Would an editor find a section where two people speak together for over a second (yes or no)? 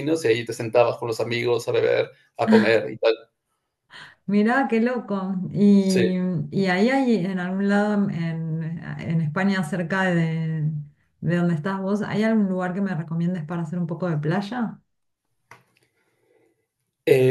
no